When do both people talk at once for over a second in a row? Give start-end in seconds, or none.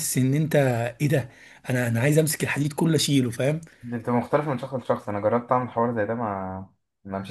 none